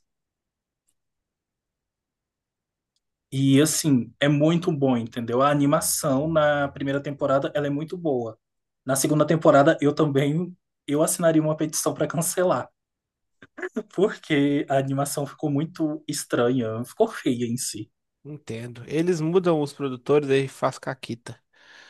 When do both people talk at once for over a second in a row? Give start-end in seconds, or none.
none